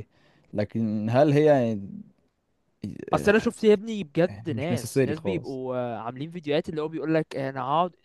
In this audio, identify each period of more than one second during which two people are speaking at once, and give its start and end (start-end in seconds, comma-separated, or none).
4.3-5.6